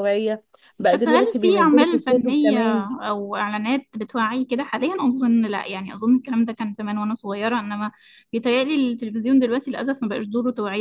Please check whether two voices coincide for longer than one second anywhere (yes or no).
yes